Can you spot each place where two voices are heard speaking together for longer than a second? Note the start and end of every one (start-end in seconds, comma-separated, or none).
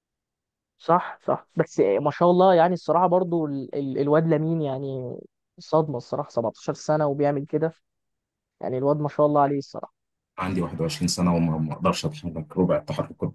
none